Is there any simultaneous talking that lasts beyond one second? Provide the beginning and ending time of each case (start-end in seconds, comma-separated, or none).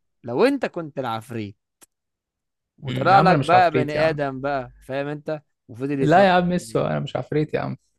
2.8-4.2